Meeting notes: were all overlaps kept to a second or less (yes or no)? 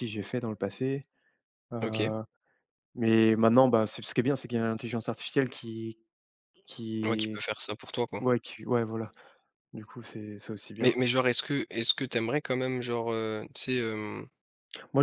yes